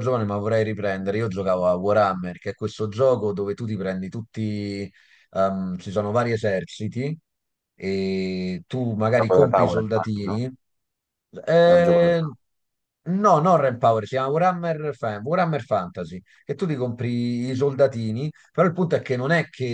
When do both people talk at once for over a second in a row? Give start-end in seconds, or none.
9.1-10.5